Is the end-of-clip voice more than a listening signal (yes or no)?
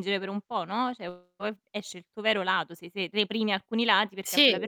no